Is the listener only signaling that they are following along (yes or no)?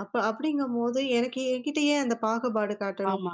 yes